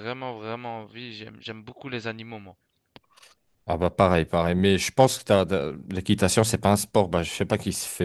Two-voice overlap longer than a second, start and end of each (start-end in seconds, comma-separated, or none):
none